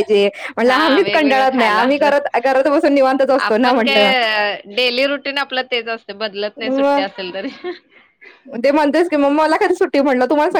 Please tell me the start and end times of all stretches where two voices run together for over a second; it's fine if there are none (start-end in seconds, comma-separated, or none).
0.7-2.1